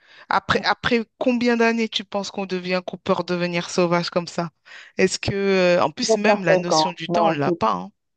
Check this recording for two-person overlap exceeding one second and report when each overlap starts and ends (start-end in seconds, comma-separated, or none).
6.0-7.6